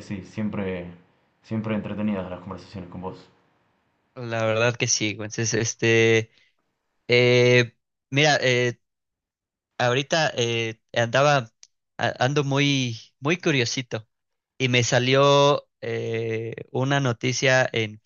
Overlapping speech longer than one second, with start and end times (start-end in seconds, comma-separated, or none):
none